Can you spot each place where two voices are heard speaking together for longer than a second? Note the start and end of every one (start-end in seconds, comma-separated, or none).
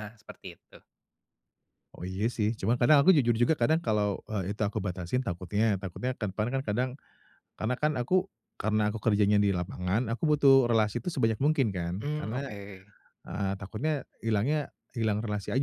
none